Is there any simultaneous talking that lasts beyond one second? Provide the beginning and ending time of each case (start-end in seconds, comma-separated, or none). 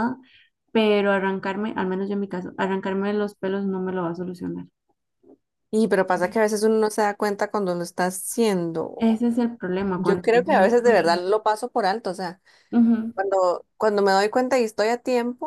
9.9-11.3